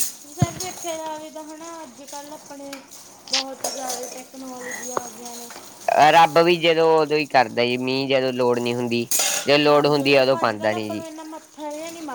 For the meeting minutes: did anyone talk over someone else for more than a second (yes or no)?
yes